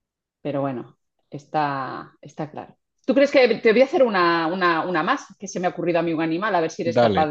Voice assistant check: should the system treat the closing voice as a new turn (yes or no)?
no